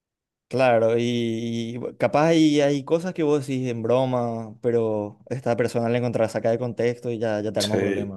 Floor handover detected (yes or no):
yes